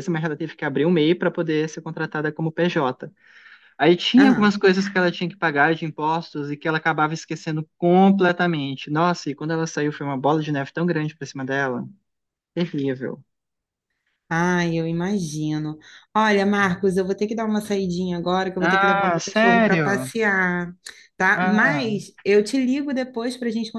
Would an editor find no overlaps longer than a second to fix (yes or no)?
no